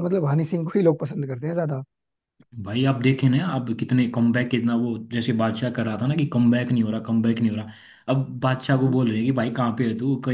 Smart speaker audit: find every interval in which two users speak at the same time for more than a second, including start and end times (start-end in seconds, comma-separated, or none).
none